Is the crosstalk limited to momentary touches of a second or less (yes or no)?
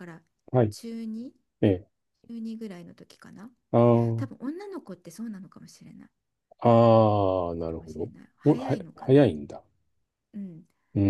no